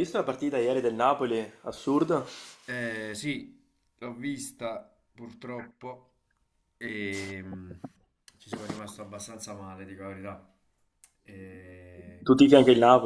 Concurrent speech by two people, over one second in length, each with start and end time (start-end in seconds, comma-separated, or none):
none